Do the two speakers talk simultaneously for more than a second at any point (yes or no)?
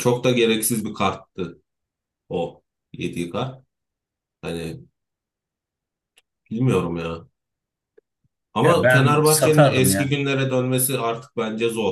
yes